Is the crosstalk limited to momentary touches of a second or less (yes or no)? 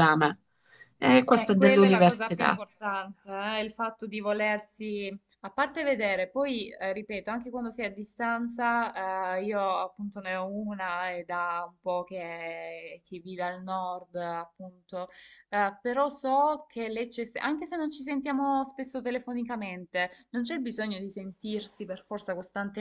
no